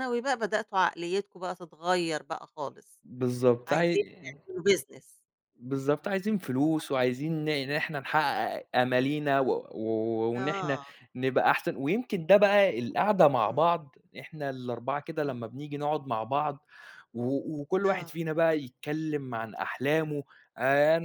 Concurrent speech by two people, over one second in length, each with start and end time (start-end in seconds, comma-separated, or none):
none